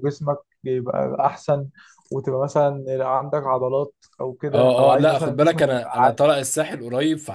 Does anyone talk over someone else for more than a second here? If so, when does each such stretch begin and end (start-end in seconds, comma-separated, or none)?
4.5-6.3